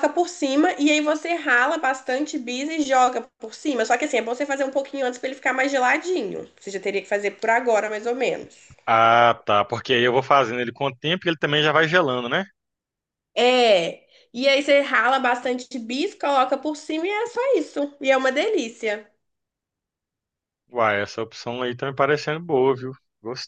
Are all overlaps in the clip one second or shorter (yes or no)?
yes